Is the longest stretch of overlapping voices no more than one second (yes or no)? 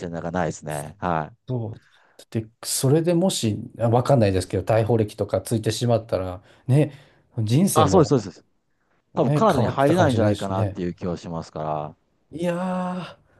no